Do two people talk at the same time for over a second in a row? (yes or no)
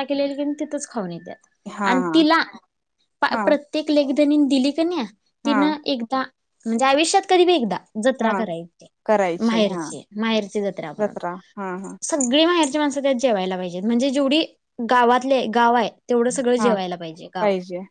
no